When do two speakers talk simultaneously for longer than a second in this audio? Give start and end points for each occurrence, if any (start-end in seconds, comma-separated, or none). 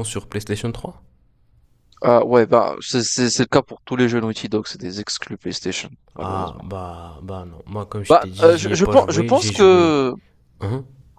8.1-10.0